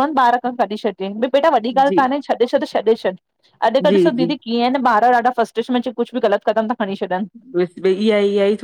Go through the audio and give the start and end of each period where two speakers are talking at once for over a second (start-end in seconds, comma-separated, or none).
none